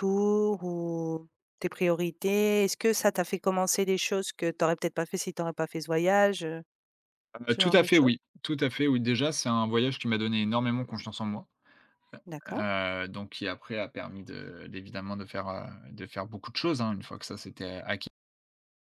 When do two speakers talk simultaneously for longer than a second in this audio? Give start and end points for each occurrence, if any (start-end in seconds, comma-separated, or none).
none